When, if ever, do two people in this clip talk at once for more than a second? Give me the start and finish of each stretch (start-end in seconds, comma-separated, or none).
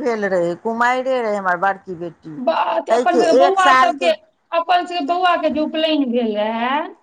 2.5-4.1